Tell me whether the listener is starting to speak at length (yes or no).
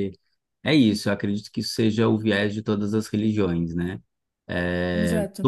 no